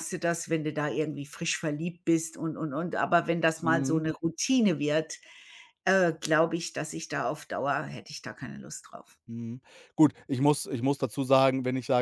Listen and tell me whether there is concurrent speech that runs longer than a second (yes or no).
no